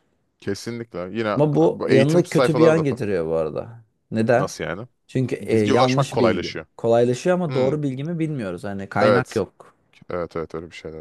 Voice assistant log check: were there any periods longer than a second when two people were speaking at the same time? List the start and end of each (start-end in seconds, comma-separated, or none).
1.4-3.0, 5.4-6.7